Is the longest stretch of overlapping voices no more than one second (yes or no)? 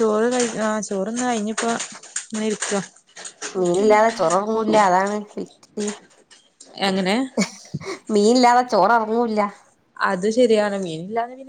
yes